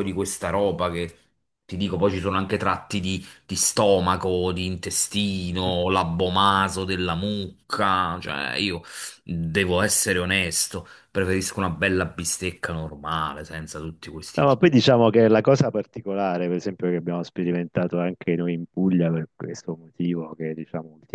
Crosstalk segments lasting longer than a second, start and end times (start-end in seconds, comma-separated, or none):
none